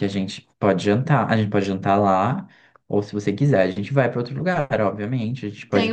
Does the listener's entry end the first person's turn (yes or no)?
yes